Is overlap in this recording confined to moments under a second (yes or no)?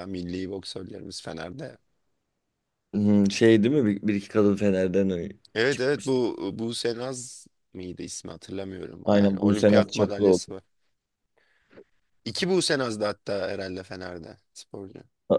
no